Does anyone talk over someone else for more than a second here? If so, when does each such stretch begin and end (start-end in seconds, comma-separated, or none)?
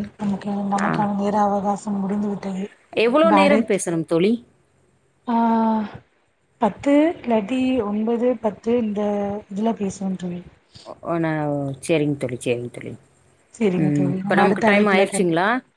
none